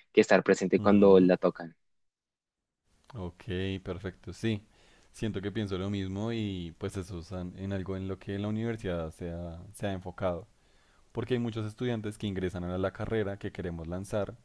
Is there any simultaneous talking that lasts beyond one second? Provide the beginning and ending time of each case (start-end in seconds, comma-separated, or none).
none